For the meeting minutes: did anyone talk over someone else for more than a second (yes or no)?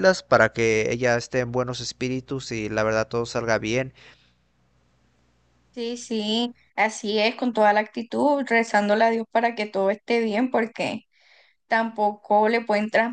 no